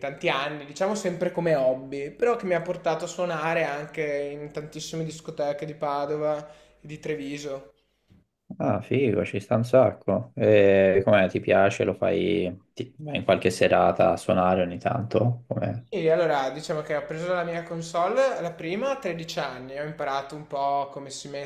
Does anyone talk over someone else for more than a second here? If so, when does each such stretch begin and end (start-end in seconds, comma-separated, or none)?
none